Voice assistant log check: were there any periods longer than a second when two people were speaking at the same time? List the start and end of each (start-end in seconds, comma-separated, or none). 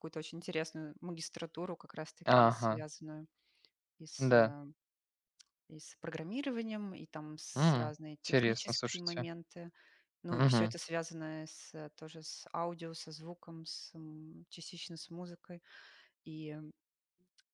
7.5-9.3